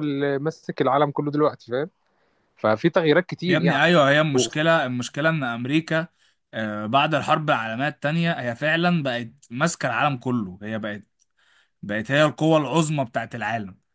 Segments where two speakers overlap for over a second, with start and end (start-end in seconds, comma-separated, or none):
none